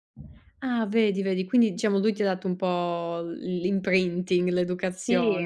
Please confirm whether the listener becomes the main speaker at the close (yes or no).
yes